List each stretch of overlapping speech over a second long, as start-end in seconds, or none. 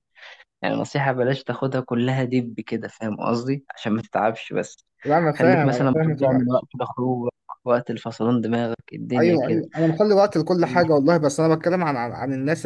5.4-6.7